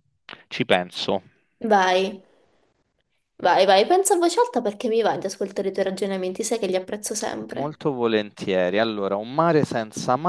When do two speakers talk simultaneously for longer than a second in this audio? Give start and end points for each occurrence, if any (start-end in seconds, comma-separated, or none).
none